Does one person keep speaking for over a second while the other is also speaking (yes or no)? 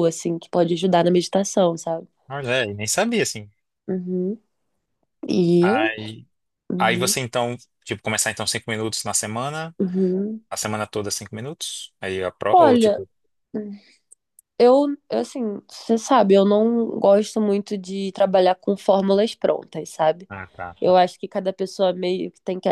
no